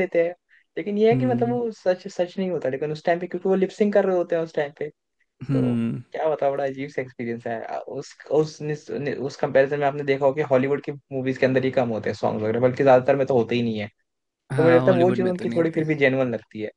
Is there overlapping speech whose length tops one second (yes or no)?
yes